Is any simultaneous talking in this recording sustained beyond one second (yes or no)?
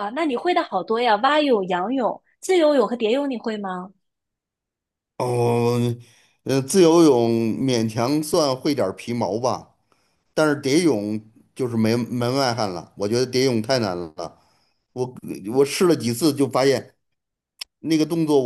no